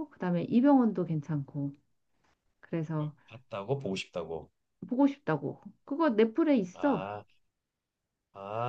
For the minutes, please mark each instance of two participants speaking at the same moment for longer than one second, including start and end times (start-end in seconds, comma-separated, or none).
none